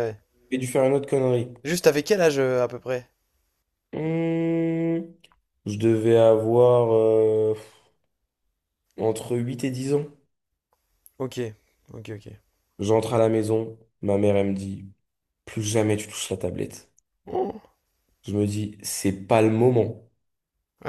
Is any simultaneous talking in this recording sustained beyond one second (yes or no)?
no